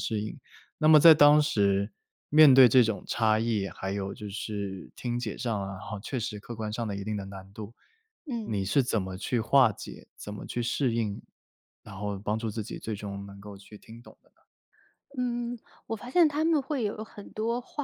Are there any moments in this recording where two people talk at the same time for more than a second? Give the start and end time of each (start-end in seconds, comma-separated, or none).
none